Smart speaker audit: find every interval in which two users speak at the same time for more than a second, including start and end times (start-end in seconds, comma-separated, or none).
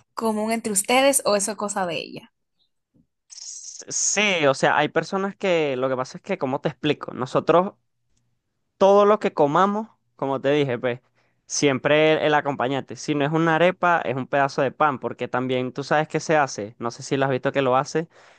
none